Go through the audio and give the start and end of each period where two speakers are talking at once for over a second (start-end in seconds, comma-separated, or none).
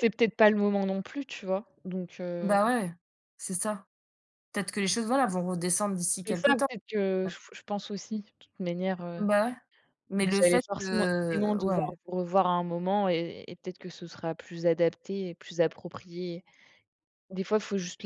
10.2-12.0